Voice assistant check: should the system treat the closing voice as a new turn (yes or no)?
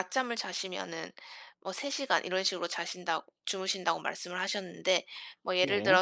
no